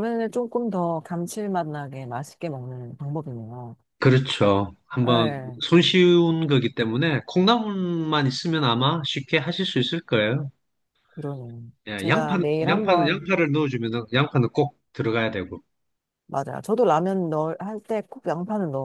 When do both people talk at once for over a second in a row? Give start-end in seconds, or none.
11.9-13.3